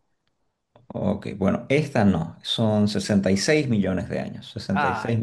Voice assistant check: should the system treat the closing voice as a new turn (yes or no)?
no